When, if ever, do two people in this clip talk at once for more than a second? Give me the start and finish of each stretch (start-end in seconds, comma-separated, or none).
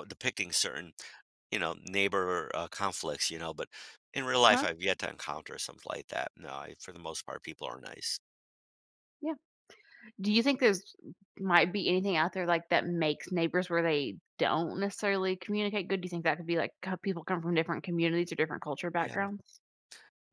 none